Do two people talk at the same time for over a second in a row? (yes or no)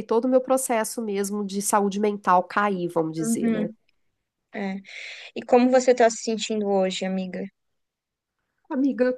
no